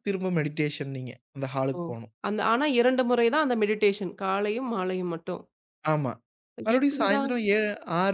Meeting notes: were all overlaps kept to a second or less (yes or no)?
yes